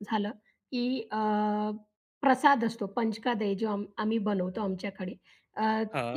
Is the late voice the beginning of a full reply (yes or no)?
no